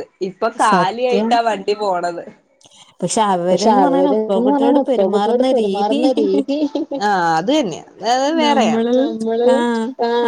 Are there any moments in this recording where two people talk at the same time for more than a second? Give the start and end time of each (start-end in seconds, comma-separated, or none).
3.5-6.0